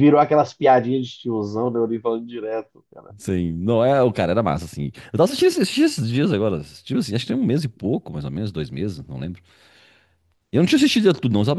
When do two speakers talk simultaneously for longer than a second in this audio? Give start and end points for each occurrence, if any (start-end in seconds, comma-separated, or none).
none